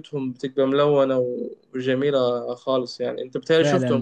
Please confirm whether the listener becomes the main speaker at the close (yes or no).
yes